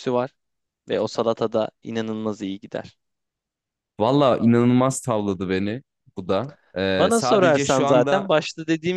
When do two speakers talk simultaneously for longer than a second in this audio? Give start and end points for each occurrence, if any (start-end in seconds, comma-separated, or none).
6.9-8.3